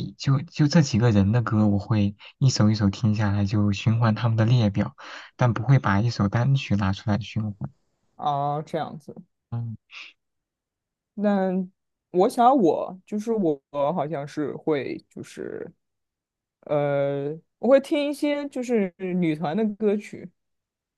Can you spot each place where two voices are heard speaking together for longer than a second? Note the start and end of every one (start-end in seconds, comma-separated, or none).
none